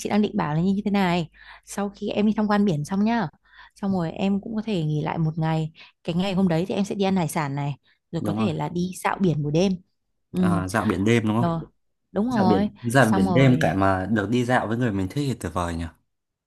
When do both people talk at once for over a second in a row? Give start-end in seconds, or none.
12.3-13.8